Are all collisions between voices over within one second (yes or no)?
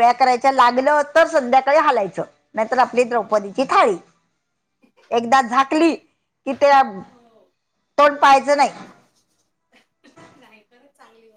yes